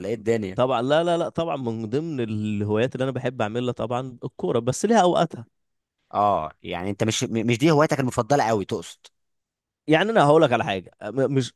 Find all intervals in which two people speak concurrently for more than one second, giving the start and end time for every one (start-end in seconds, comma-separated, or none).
none